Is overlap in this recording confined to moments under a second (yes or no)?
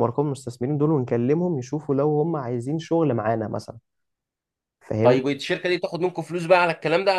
yes